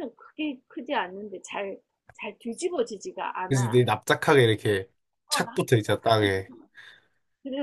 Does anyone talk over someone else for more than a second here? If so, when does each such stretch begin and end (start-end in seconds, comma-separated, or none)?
5.3-6.5